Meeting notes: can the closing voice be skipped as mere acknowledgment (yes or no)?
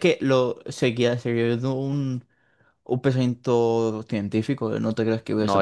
no